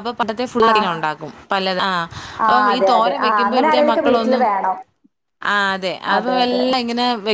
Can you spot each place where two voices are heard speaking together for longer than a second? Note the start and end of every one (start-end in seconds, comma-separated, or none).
2.5-4.4